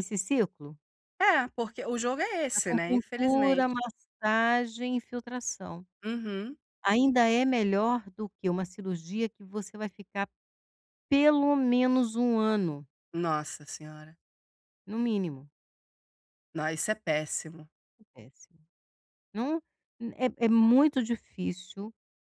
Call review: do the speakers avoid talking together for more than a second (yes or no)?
no